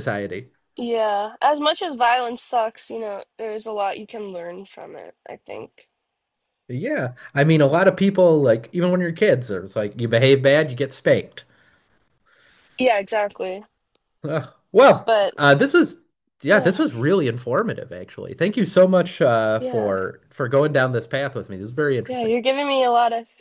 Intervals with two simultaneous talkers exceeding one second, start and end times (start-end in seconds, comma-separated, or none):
none